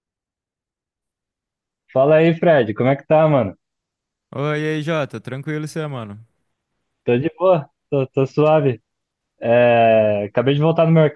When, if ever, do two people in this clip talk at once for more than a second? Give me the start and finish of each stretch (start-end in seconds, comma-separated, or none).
none